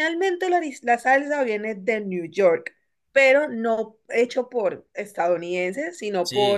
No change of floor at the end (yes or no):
yes